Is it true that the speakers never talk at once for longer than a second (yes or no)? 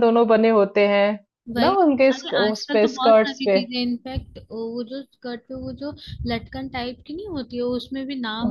no